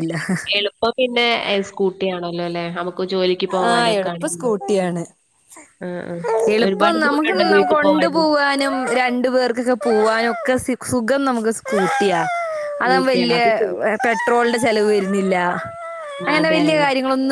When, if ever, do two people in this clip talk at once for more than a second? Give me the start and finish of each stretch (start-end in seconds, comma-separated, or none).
6.7-8.2